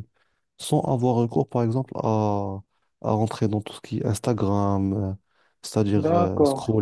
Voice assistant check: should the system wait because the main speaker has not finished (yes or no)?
yes